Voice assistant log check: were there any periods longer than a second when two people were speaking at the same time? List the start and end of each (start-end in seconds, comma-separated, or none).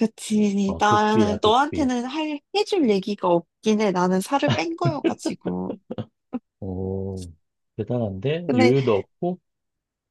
0.7-1.9